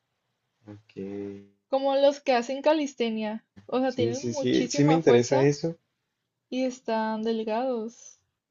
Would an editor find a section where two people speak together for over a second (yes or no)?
yes